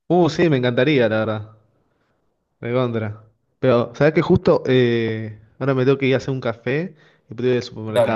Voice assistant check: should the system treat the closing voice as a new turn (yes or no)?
no